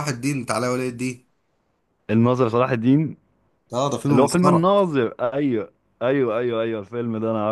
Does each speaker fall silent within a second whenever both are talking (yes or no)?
yes